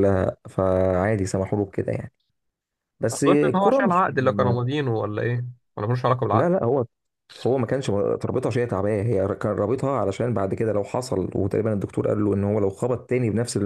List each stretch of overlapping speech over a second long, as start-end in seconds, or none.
3.1-4.6